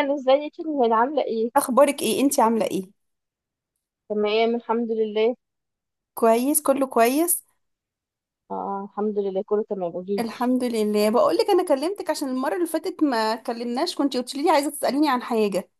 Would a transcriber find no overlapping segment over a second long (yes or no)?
yes